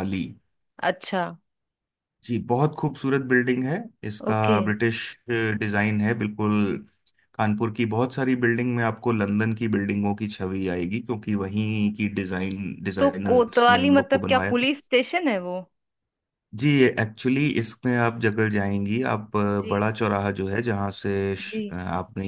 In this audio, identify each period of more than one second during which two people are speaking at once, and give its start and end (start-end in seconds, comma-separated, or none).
13.0-14.7